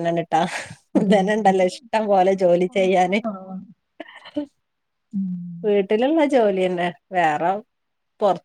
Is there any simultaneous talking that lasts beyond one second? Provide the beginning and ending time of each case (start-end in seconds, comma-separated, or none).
1.0-3.2